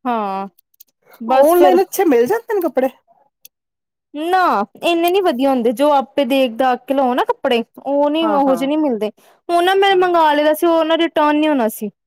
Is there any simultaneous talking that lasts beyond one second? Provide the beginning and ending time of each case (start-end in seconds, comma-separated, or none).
none